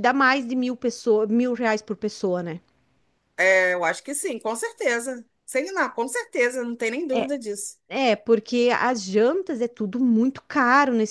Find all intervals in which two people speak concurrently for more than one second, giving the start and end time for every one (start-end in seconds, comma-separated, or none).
none